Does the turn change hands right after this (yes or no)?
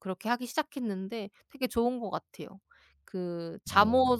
no